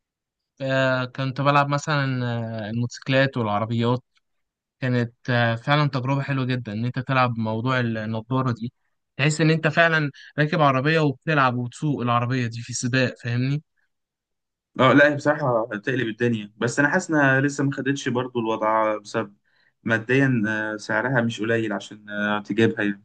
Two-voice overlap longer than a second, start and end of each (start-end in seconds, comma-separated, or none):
none